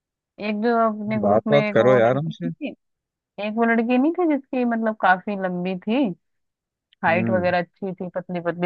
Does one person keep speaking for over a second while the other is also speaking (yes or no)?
yes